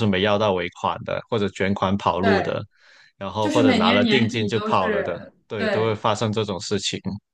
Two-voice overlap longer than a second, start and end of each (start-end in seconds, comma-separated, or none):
3.4-6.0